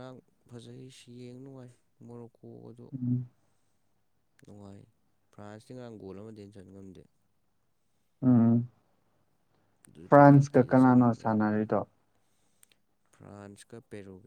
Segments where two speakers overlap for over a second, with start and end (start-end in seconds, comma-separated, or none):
10.1-11.5